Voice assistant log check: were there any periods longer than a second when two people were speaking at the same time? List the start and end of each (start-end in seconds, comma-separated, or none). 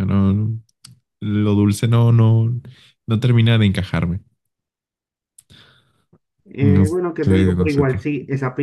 6.6-8.0